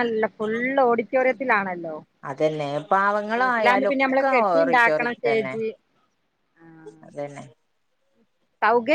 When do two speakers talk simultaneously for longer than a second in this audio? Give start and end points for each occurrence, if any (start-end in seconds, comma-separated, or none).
3.4-5.5